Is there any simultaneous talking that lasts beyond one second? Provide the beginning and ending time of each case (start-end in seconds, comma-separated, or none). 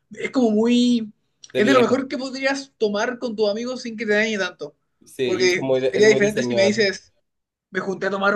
5.2-6.8